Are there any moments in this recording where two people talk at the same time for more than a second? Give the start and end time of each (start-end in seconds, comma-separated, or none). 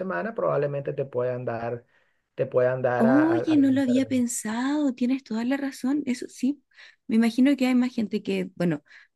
2.9-4.3